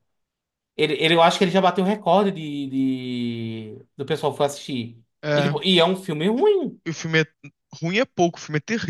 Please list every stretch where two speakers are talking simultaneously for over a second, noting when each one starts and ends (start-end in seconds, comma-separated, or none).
none